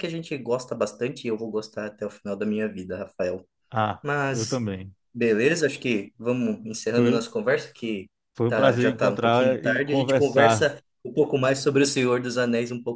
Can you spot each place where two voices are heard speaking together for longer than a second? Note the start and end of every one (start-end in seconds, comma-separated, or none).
8.5-10.7